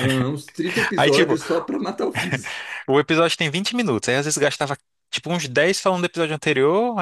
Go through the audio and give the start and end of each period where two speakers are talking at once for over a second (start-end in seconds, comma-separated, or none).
none